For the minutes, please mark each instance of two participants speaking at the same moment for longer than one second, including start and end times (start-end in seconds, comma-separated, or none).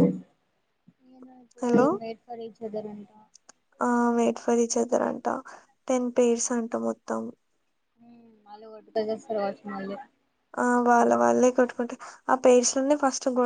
none